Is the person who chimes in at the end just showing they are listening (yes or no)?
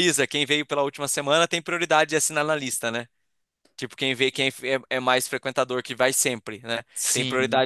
yes